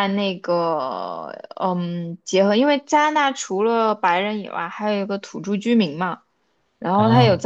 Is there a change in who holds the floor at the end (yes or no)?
no